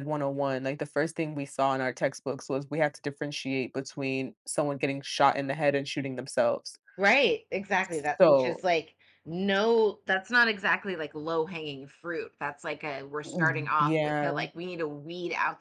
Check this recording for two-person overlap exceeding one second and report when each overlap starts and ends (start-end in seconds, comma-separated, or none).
13.2-14.4